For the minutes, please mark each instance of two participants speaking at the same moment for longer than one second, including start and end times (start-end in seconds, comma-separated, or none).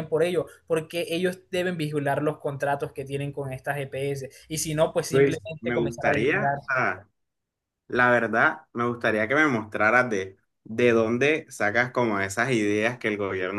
5.1-6.6